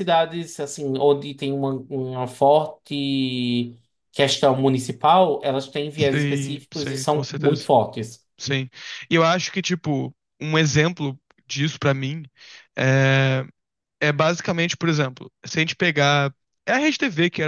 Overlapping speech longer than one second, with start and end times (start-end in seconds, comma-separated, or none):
6.0-7.7